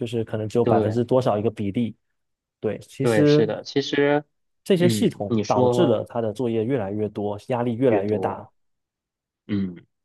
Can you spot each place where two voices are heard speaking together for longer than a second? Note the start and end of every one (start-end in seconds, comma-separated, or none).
4.8-6.0